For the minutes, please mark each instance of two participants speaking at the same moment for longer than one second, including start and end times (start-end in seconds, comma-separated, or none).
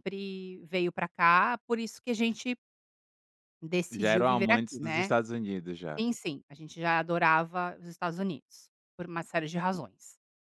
3.9-5.1